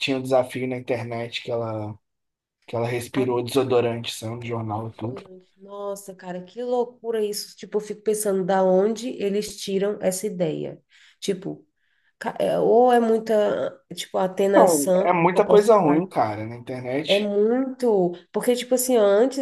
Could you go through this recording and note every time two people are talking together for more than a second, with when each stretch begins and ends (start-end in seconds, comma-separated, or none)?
14.5-16.0